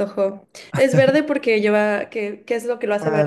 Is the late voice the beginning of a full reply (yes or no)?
yes